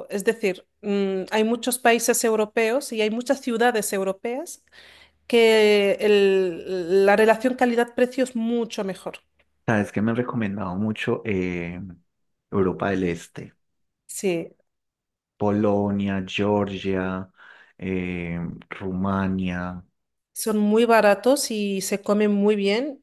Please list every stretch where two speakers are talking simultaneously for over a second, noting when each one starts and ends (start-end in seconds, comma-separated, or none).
none